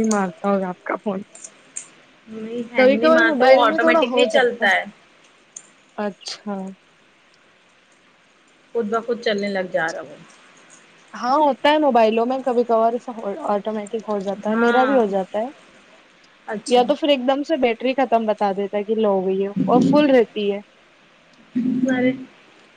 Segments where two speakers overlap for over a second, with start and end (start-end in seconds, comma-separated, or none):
2.8-4.7